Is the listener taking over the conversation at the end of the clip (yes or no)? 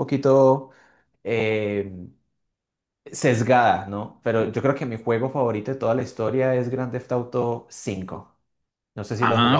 yes